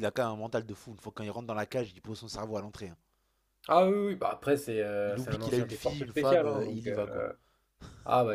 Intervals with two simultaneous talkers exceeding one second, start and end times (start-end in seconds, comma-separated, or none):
5.0-7.2